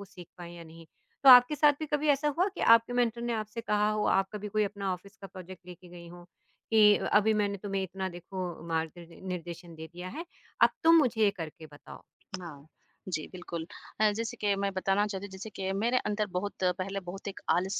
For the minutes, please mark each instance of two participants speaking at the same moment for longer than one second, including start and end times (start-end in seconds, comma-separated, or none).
none